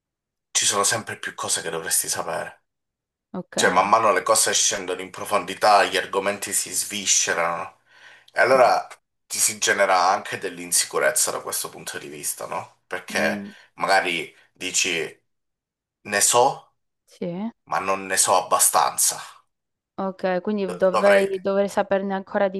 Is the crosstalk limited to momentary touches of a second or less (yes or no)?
yes